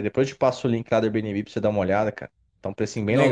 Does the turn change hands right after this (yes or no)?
yes